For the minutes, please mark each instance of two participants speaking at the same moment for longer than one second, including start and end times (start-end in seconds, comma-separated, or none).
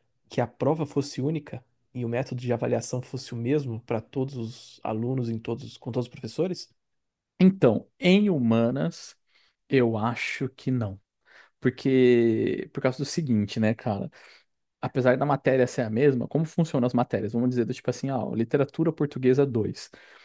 none